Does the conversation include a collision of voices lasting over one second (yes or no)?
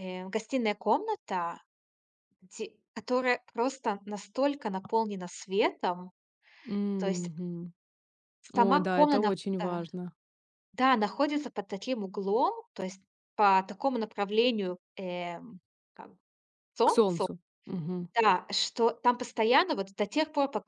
yes